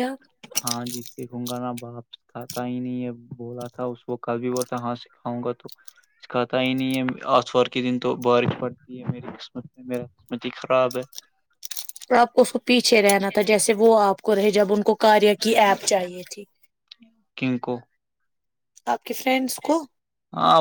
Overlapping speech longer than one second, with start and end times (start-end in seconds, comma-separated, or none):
none